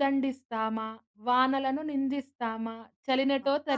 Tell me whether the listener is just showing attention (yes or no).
yes